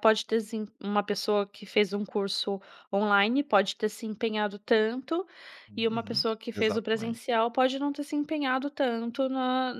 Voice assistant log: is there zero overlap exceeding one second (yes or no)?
no